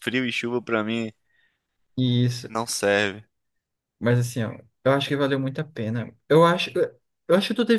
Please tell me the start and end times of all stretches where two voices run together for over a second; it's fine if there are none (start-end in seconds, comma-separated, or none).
none